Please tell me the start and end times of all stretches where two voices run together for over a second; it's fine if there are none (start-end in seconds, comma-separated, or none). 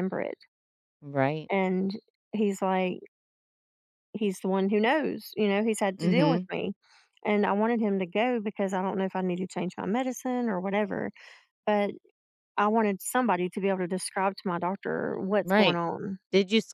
none